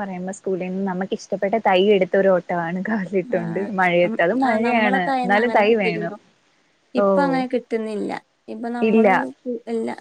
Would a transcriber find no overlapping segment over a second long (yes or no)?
no